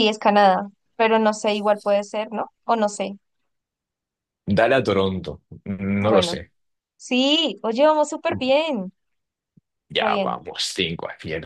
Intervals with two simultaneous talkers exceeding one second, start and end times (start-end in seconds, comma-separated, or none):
none